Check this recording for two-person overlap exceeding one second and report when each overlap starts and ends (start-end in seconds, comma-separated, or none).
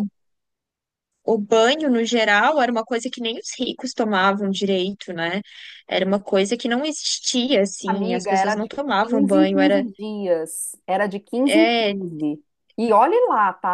7.9-9.8